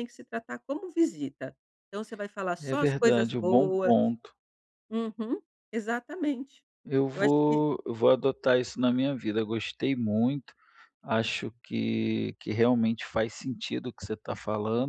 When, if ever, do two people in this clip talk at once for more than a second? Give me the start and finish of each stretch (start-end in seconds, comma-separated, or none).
2.6-3.9